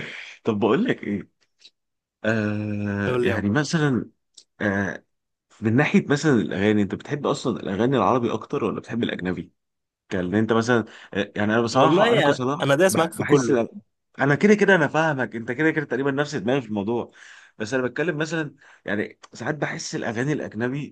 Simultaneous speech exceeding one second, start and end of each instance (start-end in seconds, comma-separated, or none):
11.8-13.6